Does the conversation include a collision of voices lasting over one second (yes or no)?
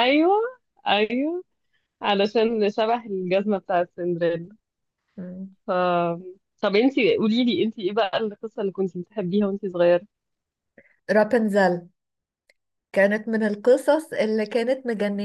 no